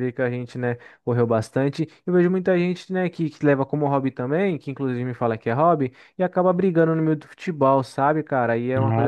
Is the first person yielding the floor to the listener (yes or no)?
no